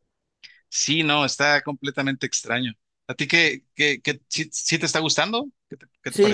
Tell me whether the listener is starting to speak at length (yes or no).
yes